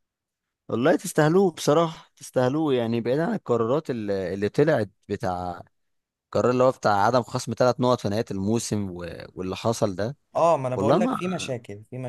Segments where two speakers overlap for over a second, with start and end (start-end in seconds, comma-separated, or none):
none